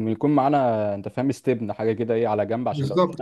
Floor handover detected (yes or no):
yes